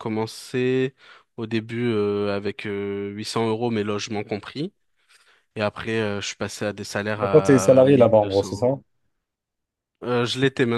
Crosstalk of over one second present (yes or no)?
yes